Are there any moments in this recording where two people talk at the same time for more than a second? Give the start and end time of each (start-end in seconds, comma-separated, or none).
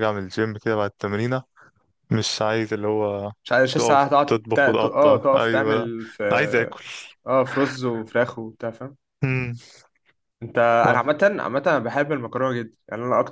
3.7-5.9